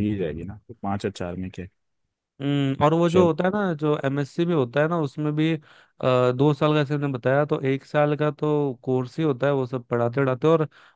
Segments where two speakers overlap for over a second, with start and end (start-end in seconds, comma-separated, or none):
none